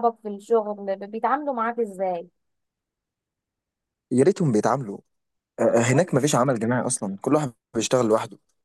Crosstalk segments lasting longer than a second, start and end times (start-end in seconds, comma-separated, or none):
none